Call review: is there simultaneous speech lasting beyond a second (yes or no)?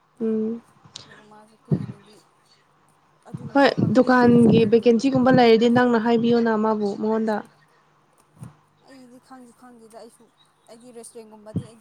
yes